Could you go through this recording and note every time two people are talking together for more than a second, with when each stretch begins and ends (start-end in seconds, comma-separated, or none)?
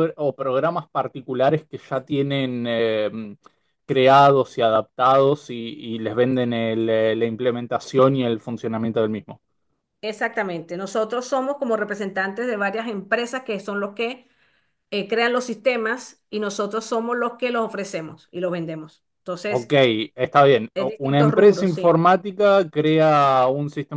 20.7-22.0